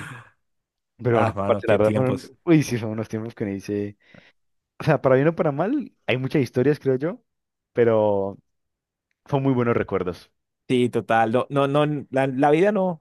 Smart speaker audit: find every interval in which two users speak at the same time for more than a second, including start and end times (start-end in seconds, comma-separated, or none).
1.1-2.3